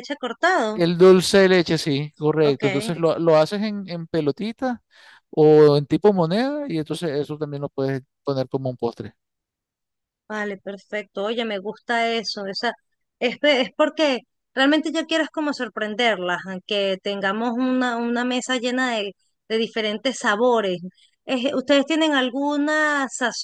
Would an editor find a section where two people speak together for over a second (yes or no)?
no